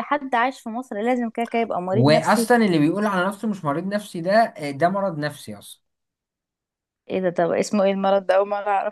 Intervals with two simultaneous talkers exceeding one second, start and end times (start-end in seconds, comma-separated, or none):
none